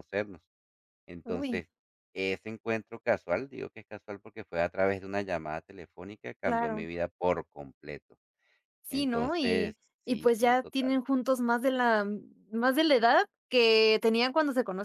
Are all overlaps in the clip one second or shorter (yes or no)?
no